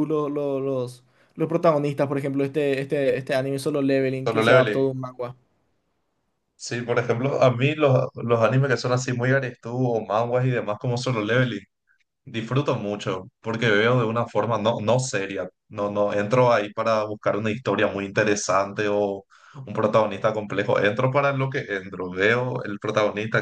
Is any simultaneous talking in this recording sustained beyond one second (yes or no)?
no